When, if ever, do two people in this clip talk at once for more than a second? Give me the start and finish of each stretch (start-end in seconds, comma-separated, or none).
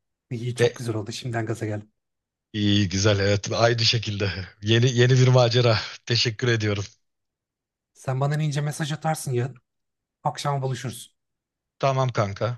none